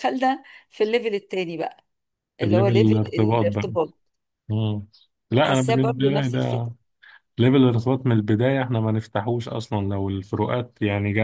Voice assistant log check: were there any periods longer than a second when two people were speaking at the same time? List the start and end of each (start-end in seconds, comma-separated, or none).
2.4-3.7, 5.3-6.7